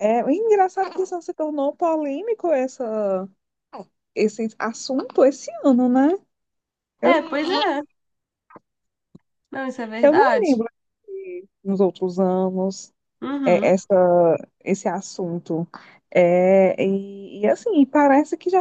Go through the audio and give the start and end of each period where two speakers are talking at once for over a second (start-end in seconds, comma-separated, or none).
none